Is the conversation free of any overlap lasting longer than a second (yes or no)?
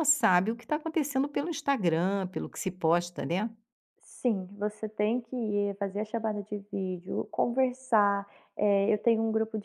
yes